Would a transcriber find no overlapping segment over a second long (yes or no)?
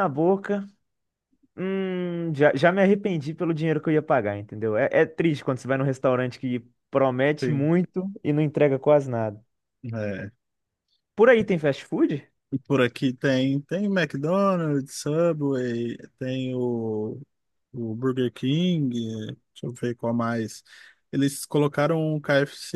yes